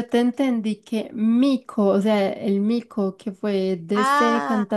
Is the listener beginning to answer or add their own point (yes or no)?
no